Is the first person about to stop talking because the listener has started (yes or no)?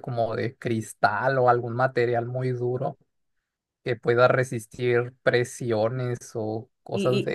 yes